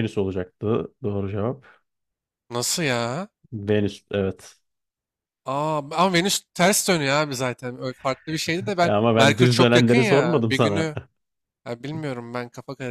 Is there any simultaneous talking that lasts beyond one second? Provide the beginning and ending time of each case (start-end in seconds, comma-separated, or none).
8.8-10.9